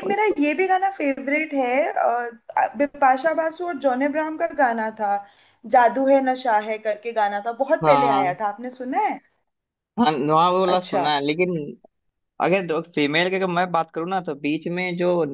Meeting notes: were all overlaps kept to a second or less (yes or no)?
yes